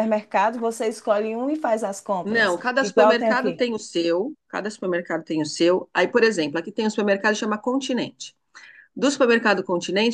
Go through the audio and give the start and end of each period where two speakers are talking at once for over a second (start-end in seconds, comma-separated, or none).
2.2-3.7